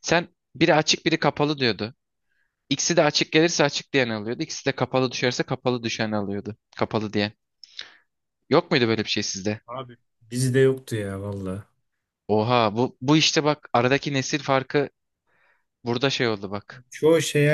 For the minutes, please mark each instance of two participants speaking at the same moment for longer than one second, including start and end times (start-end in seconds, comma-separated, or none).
none